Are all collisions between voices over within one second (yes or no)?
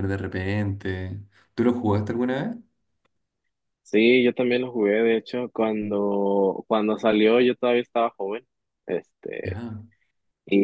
yes